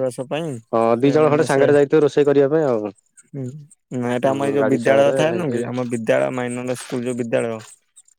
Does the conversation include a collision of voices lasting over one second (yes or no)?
yes